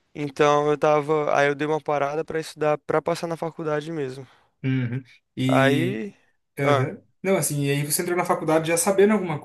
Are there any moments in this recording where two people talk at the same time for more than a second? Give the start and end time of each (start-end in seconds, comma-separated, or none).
none